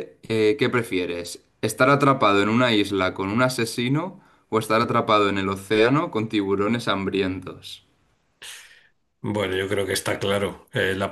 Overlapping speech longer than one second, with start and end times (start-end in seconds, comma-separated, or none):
none